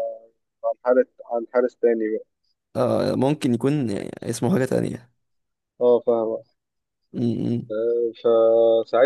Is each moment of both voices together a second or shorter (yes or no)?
yes